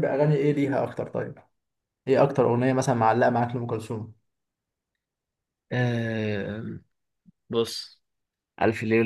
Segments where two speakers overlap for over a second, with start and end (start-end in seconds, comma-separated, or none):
none